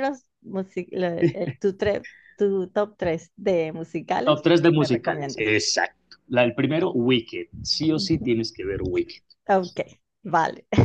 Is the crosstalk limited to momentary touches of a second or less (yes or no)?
no